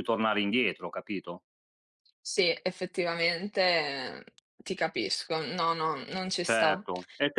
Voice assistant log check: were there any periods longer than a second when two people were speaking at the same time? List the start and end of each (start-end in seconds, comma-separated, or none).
none